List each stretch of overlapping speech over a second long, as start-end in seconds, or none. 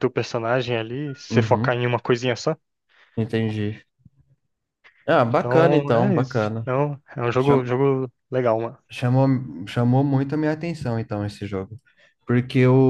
5.3-6.6